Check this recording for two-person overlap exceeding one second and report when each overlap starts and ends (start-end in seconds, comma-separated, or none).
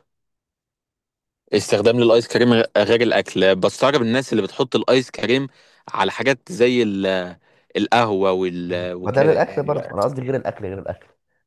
8.7-10.0